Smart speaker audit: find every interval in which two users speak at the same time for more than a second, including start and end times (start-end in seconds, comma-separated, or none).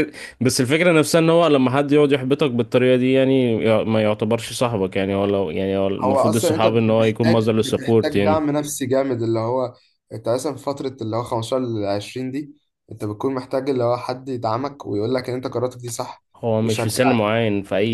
6.0-8.5